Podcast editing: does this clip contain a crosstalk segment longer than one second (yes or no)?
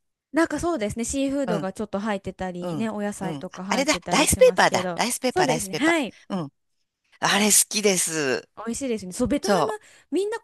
yes